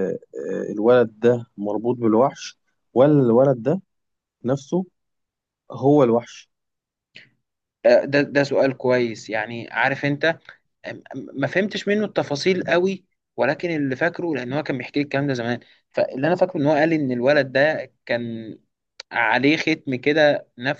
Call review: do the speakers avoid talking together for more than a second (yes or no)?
yes